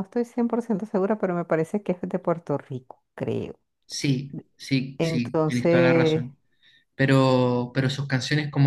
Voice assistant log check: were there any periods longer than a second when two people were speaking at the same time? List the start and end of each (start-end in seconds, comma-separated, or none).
5.0-6.3